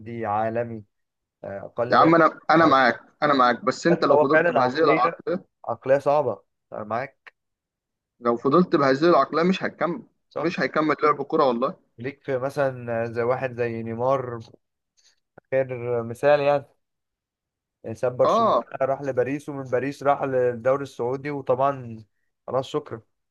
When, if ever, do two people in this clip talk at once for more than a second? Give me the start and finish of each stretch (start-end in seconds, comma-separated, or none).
3.9-5.2